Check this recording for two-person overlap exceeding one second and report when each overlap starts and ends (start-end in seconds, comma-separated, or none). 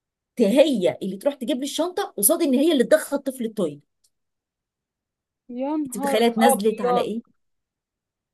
5.9-7.1